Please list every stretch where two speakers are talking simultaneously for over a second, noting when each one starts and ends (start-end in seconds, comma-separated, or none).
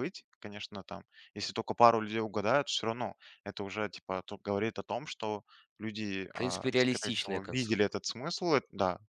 6.3-7.9